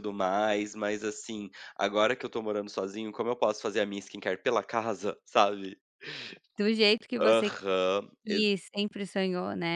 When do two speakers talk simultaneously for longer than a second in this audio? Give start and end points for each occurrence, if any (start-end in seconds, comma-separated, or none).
none